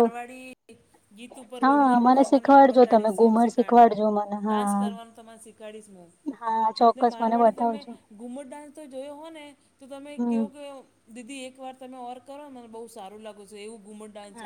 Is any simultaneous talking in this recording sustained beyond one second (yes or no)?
yes